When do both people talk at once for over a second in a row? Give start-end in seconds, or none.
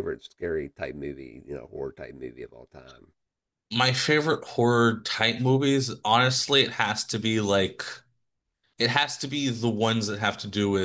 none